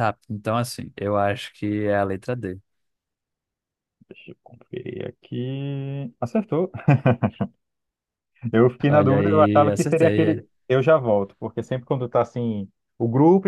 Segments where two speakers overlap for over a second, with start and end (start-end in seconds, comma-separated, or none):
8.9-10.4